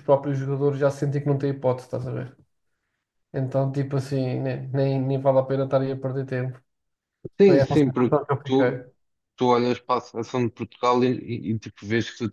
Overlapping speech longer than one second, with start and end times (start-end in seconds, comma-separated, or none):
7.5-8.9